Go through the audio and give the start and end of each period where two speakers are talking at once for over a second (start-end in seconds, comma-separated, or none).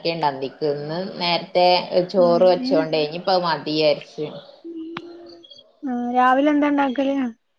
none